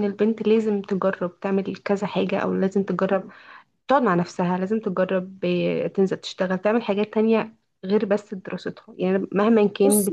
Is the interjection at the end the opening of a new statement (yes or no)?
no